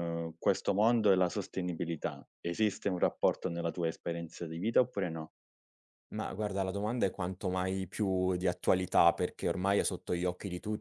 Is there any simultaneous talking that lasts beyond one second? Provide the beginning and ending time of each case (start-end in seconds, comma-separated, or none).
none